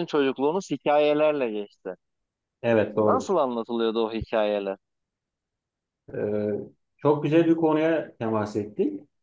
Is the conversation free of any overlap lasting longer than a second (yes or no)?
yes